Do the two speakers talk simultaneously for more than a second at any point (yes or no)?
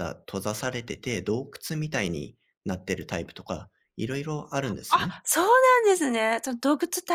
no